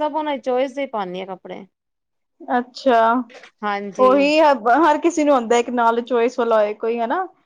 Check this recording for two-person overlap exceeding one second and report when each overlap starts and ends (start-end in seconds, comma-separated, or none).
none